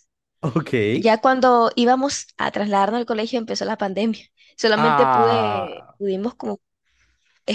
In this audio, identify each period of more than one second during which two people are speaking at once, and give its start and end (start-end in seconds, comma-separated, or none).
4.8-6.0